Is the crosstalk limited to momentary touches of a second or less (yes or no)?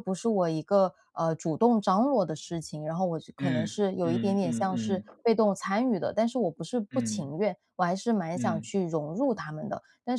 no